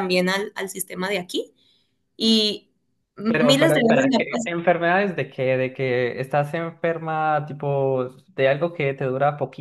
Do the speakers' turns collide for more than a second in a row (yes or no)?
yes